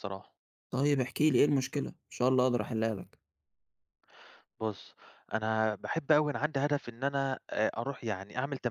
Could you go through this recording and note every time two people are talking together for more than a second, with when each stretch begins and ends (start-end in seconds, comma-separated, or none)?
none